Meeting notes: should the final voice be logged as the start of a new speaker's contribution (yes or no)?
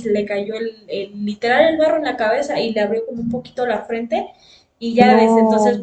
no